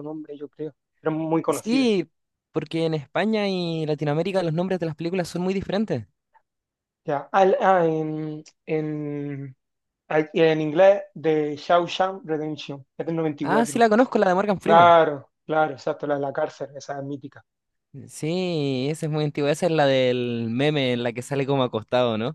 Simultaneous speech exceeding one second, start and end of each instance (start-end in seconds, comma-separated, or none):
none